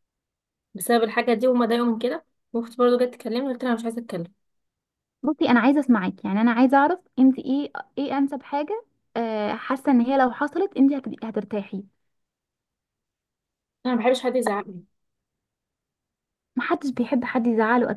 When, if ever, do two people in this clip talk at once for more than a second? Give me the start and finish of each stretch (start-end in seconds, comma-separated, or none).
none